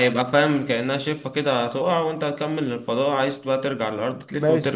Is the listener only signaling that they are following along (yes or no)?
no